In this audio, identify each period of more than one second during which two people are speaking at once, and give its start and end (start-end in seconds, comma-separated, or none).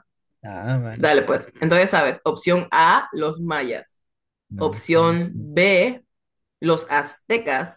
4.5-5.8